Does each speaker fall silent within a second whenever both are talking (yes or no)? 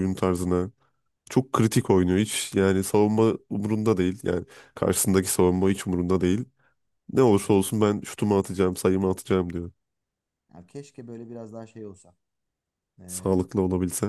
yes